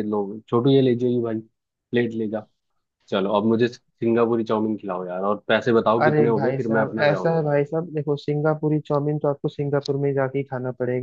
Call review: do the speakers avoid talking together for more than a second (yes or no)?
no